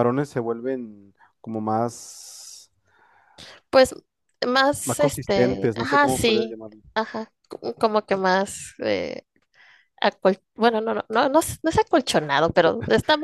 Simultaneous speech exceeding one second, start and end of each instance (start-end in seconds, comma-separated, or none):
4.8-6.6